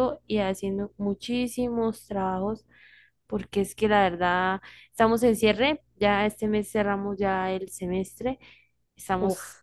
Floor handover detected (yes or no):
no